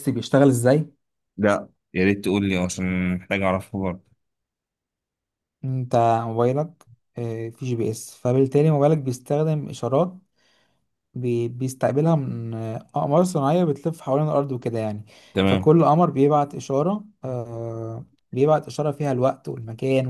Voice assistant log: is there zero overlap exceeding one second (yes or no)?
yes